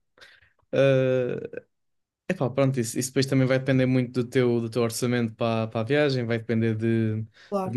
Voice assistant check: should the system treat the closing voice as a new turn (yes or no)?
no